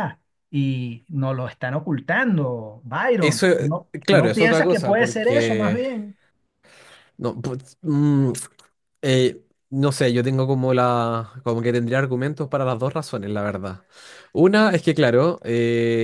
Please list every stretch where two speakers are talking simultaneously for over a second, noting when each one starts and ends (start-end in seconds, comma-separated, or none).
3.2-5.8